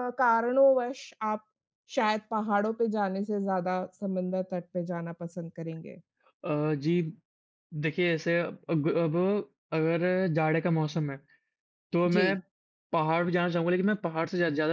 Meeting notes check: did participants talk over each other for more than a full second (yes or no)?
no